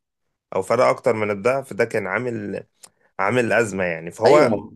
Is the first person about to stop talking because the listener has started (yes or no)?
yes